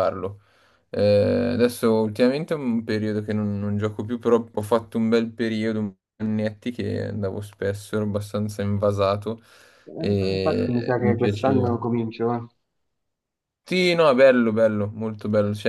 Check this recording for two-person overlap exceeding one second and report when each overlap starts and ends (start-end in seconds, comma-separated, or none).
10.0-11.7